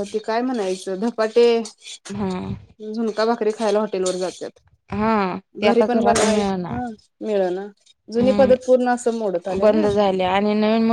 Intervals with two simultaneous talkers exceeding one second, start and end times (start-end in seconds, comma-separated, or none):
8.2-10.1